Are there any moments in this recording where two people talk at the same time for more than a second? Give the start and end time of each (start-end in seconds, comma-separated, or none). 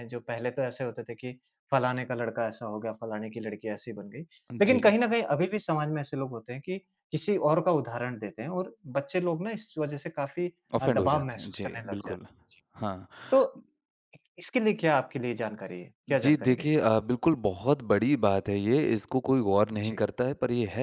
10.7-12.3